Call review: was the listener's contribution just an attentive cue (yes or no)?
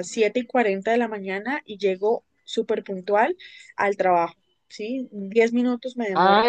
no